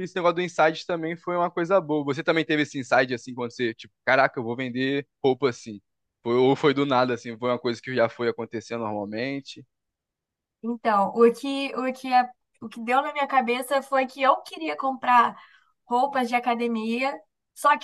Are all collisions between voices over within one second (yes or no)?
yes